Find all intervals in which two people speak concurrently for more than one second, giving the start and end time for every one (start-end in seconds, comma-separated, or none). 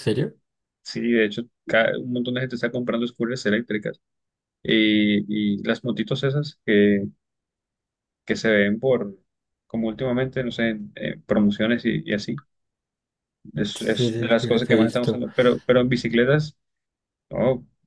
13.7-15.2